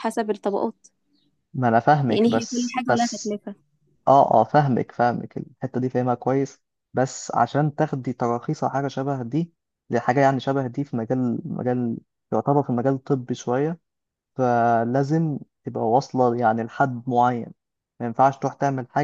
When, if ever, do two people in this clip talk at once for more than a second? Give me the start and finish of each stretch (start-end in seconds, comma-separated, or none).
2.1-3.4